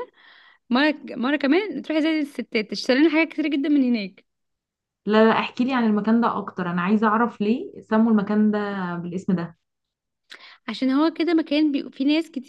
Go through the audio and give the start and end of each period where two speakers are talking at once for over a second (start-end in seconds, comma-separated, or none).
none